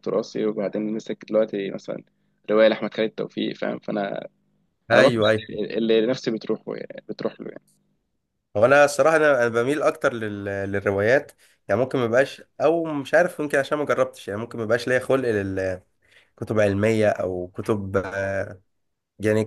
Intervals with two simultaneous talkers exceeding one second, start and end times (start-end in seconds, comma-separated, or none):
none